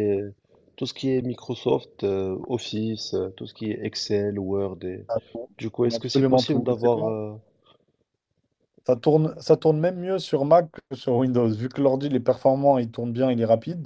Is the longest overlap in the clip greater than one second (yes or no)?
yes